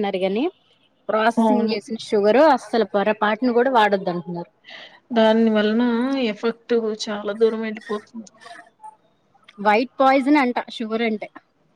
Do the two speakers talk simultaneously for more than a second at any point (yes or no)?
no